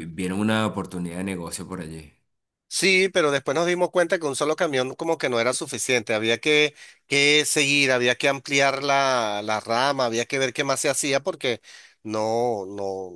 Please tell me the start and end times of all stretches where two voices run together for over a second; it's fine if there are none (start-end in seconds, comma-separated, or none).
none